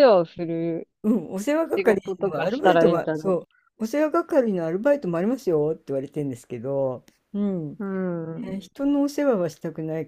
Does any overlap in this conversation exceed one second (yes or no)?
yes